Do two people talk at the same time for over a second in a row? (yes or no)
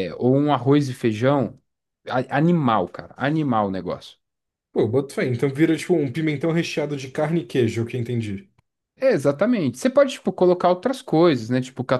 no